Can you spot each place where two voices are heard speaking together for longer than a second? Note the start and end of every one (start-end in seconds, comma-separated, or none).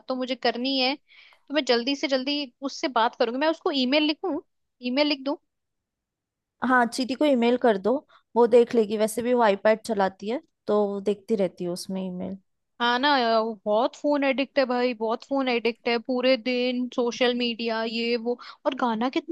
none